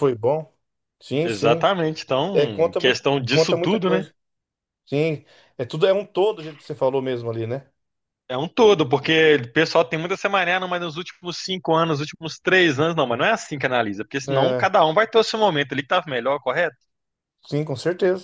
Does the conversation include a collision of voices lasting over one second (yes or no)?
yes